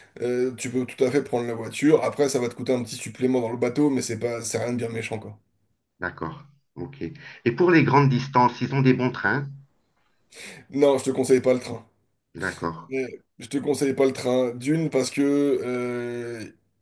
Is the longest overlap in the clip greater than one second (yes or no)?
no